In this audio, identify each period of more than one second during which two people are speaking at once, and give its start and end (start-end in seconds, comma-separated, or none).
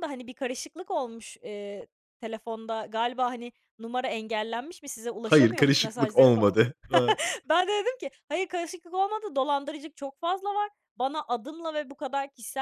5.2-6.6